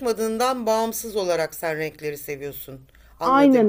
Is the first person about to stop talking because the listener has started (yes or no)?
yes